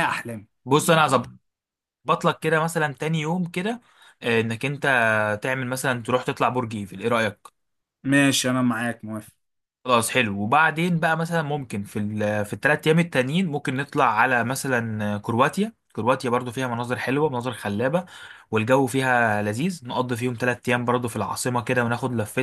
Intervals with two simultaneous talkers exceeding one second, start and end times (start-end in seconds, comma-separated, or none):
none